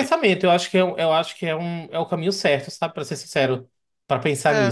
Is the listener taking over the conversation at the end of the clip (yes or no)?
yes